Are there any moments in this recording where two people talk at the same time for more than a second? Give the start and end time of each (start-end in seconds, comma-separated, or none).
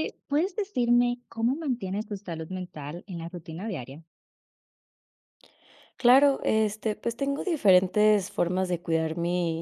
none